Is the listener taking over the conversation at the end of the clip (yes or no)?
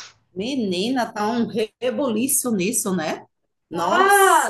yes